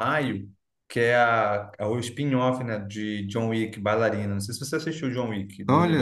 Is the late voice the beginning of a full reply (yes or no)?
yes